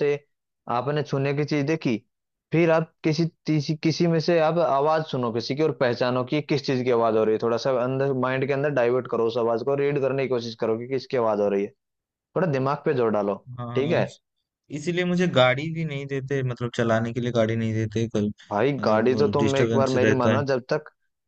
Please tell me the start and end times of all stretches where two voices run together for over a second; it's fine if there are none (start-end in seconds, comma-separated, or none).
18.8-20.4